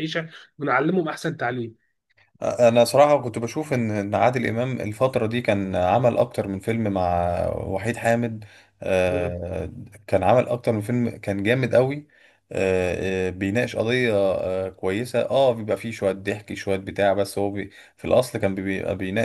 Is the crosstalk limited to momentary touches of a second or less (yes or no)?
yes